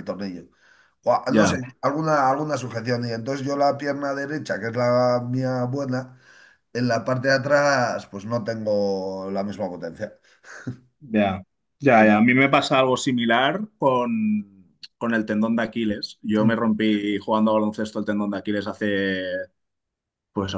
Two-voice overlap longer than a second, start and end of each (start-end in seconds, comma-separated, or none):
none